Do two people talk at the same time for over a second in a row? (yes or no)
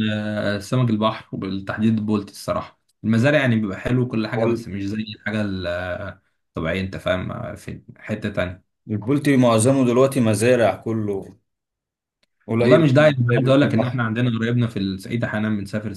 yes